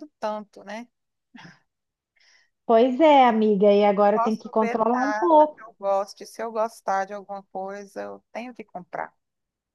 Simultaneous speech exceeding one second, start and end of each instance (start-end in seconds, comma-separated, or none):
4.1-5.6